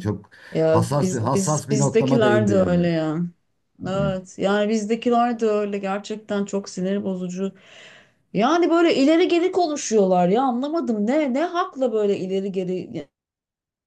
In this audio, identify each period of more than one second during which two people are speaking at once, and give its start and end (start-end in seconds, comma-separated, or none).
0.7-2.8